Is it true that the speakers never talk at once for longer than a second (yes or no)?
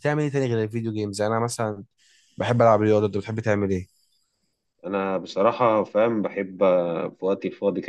yes